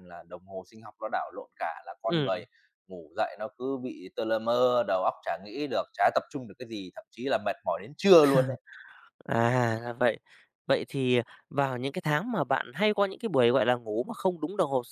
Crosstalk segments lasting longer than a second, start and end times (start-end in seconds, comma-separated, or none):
none